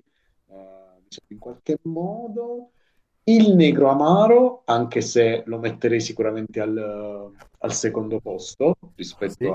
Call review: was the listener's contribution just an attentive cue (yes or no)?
yes